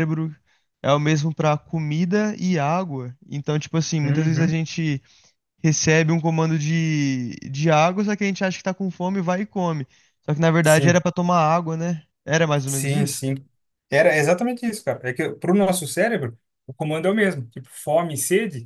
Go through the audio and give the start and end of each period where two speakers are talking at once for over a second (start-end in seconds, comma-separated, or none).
none